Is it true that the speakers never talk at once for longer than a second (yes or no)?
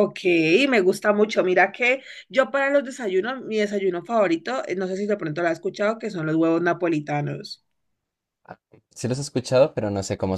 yes